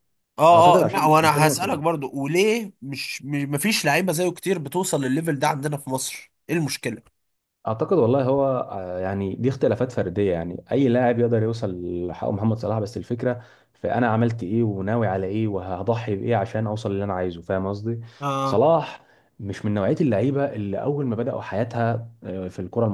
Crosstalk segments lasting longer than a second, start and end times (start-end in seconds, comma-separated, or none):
0.5-1.8